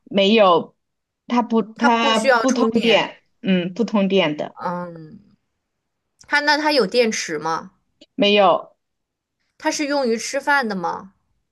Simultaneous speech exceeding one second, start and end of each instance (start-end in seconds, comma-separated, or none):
1.7-3.0